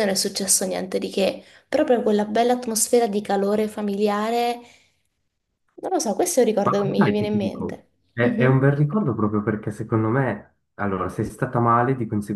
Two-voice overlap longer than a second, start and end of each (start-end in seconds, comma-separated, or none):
6.6-8.7